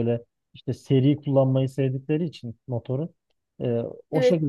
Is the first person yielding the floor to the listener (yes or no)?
no